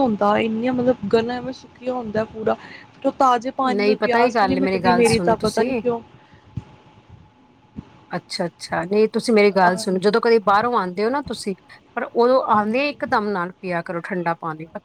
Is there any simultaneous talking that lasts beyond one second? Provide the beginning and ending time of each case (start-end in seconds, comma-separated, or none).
3.8-5.7